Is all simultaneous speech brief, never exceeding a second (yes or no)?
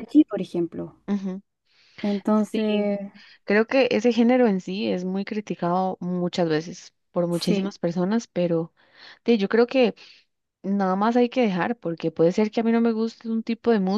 yes